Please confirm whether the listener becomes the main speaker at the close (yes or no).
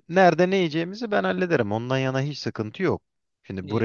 no